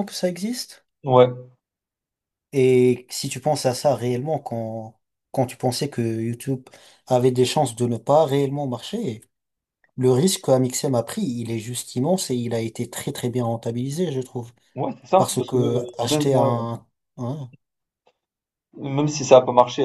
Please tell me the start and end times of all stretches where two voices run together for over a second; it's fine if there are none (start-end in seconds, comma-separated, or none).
15.2-16.6